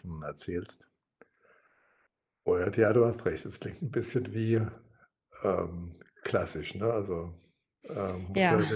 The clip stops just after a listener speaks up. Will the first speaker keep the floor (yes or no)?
yes